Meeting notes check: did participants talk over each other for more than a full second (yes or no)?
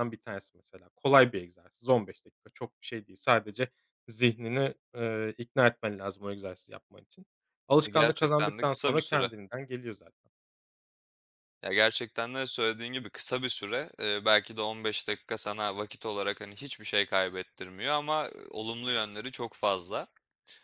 yes